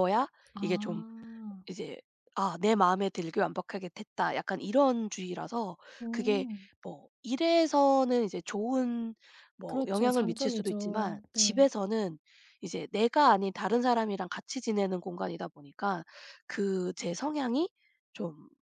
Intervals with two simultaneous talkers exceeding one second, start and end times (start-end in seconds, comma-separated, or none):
9.7-11.7